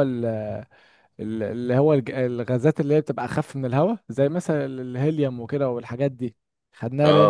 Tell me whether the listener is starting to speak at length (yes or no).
no